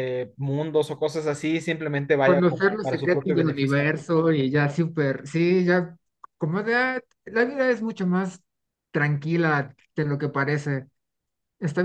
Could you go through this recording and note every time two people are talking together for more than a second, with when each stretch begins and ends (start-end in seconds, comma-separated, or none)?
2.2-3.9